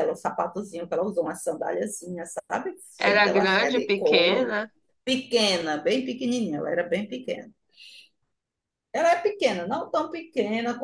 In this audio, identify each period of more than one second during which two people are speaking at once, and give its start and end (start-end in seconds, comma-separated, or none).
3.0-4.5